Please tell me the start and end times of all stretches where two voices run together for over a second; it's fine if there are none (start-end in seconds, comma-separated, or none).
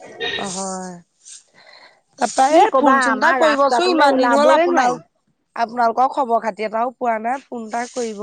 2.5-5.0